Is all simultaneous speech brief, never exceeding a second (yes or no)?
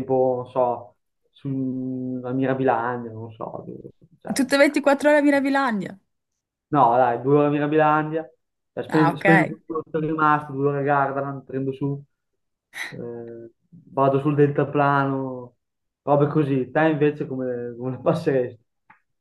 yes